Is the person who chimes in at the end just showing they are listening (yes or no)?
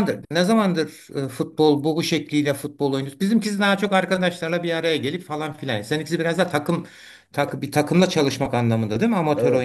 no